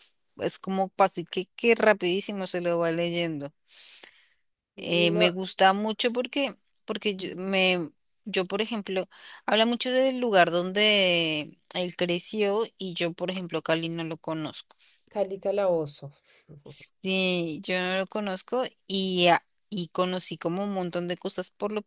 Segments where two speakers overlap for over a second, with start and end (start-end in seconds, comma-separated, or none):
none